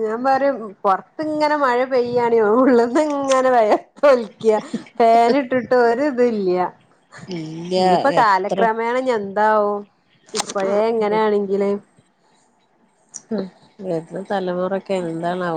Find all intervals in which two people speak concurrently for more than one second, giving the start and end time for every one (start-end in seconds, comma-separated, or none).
none